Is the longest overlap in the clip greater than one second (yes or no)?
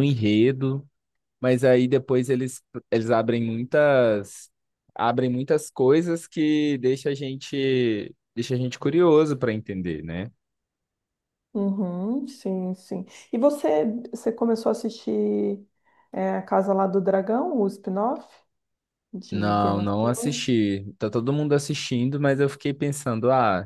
yes